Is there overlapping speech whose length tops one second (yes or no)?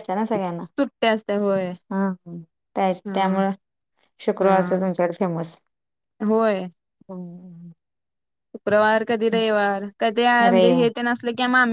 no